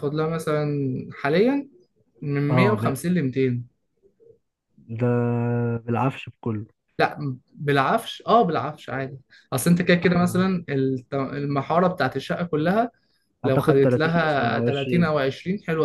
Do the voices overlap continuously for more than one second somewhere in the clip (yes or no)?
yes